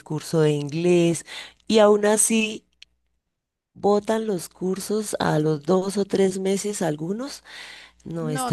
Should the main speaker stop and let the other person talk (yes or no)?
yes